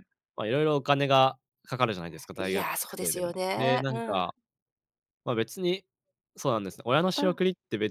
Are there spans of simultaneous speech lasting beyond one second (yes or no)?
yes